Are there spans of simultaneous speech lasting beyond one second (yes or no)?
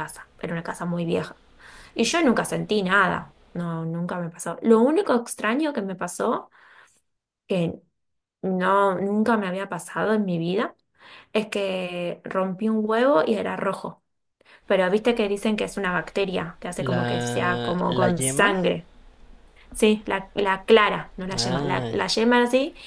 yes